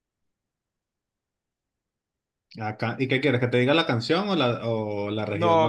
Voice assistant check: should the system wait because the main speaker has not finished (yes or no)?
no